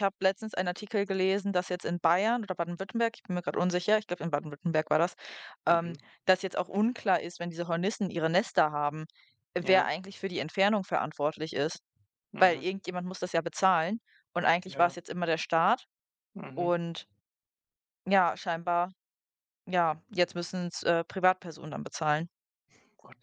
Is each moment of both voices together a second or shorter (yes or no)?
yes